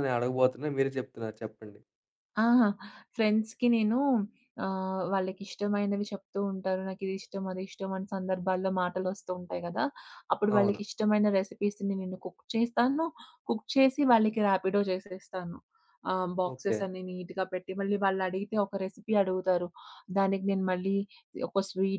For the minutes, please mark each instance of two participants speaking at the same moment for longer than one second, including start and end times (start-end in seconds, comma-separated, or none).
none